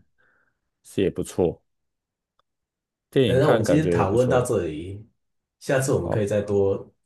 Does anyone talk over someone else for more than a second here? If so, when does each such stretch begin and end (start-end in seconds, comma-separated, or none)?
3.2-4.5